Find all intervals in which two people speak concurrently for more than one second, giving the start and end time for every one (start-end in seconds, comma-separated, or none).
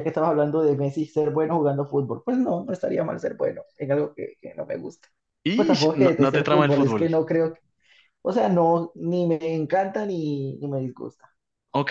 5.5-7.1